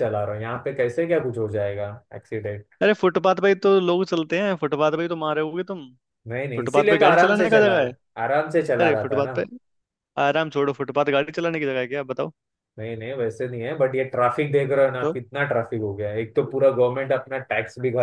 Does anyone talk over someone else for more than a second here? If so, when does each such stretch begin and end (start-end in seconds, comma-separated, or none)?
6.5-7.9